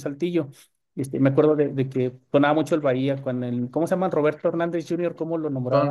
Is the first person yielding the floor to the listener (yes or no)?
yes